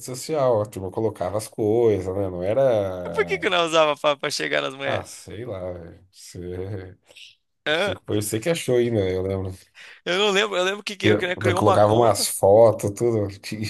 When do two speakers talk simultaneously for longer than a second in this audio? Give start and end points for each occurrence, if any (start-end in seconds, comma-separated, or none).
11.0-12.3